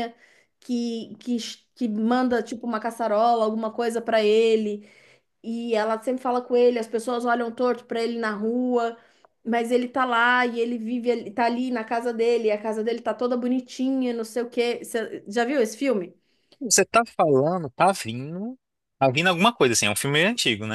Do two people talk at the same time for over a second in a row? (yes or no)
no